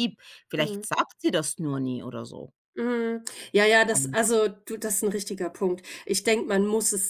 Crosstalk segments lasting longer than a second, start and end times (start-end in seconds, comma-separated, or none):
none